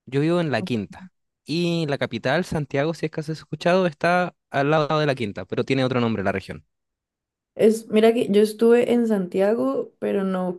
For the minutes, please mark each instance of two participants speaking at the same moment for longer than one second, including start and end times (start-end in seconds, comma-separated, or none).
none